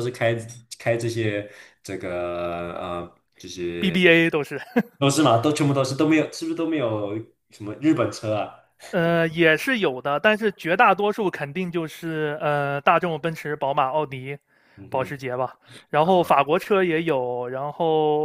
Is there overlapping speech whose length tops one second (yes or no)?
no